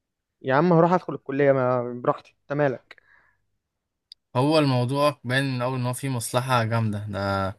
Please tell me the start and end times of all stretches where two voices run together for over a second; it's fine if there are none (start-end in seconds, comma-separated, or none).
none